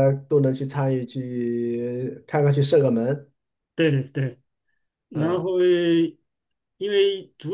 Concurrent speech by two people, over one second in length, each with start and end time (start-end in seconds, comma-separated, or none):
none